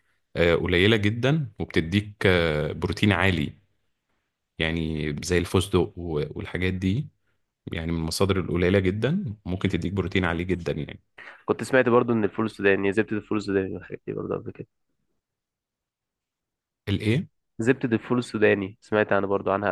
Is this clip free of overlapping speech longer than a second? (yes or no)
yes